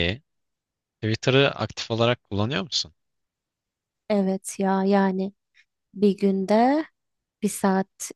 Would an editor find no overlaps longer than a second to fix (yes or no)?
yes